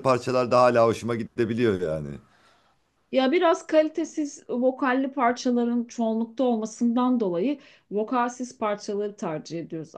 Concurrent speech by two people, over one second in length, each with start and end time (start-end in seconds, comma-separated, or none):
none